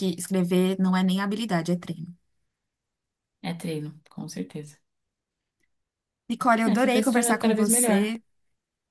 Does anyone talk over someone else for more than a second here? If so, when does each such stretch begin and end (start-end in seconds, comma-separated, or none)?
6.7-8.1